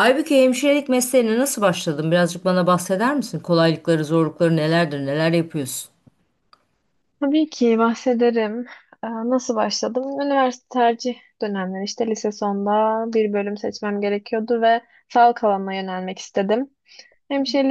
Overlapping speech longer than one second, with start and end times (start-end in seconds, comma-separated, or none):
none